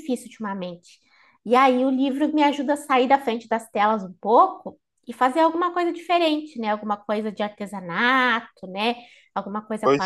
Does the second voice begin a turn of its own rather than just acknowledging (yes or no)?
no